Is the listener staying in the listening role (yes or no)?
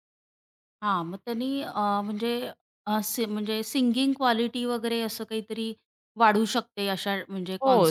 no